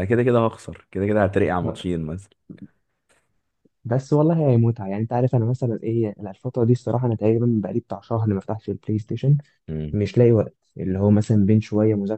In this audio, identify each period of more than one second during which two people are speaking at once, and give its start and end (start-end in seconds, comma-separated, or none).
none